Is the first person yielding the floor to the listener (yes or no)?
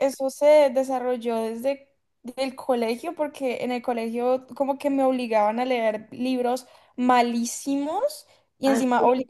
no